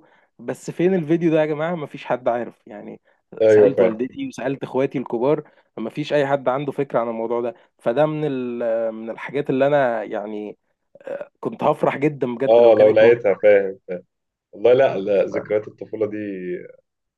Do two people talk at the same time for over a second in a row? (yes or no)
no